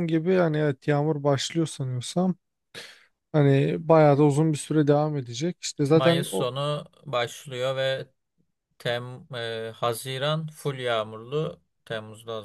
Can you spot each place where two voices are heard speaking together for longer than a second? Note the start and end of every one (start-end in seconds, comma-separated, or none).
none